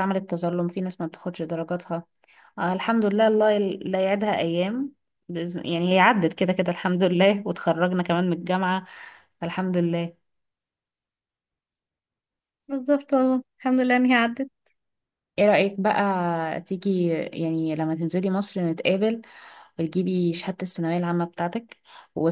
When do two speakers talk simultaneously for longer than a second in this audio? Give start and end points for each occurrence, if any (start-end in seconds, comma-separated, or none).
none